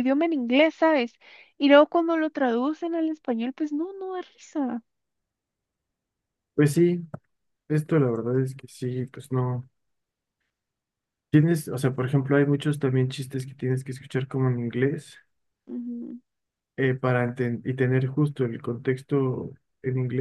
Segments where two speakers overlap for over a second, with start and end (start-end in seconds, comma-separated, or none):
none